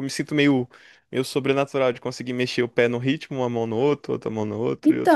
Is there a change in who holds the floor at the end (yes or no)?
yes